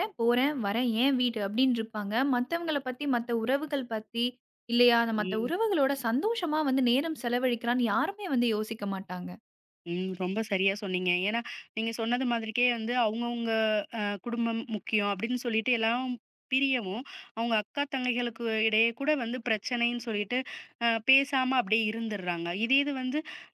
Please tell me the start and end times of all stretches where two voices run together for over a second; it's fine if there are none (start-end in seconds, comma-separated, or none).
none